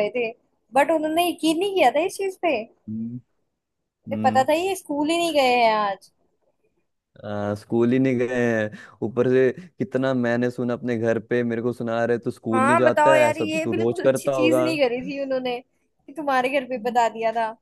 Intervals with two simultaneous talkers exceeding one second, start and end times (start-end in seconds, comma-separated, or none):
12.5-14.6